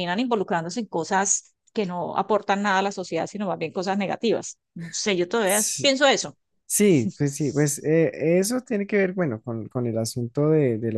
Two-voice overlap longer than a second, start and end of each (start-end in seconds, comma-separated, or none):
none